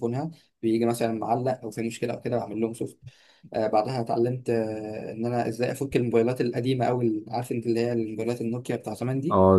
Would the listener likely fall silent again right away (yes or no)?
no